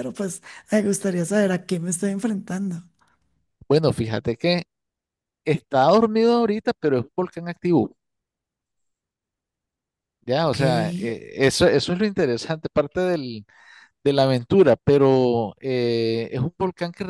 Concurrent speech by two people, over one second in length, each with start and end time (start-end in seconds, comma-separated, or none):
none